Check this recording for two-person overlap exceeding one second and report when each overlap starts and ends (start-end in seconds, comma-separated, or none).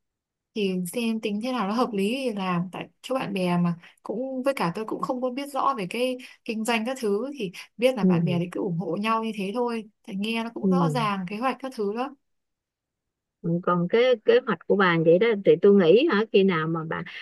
none